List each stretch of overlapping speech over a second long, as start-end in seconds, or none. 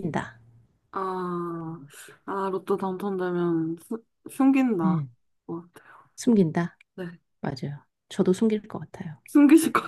none